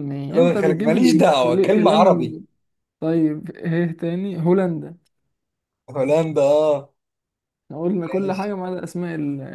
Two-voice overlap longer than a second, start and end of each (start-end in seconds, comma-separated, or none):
0.5-2.4